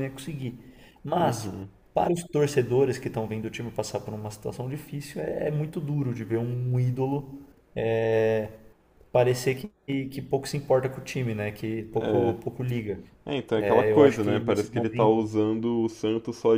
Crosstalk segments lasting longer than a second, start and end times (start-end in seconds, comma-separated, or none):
13.6-15.1